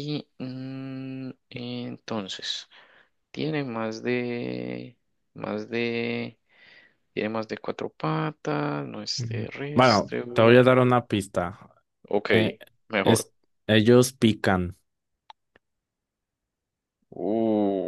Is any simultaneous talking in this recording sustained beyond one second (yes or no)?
yes